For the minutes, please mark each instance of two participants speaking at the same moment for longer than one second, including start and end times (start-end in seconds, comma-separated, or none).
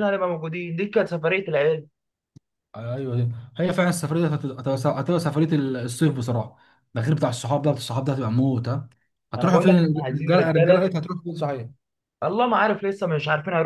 9.4-10.9